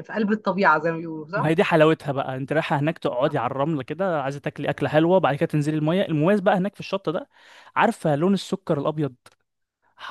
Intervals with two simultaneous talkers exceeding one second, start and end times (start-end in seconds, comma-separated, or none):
none